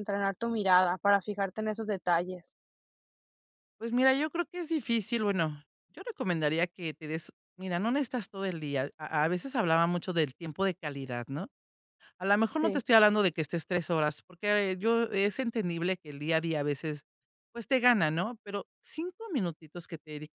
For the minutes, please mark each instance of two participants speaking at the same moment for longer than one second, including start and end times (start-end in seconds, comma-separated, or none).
none